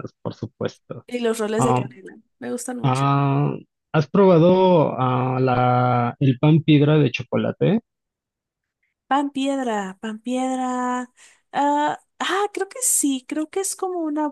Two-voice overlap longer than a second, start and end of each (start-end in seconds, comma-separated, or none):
none